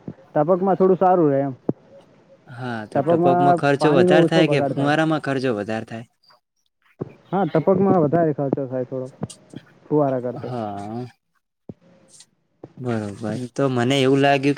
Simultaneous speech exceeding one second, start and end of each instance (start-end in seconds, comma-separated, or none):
2.9-4.8